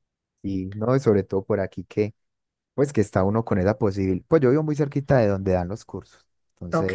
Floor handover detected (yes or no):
no